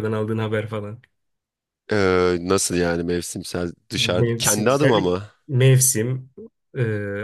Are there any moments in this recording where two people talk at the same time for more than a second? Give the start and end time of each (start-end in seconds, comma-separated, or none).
3.9-5.3